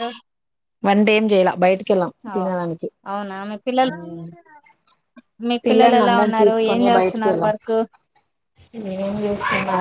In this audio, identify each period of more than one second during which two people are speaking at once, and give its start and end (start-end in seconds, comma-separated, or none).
5.7-7.5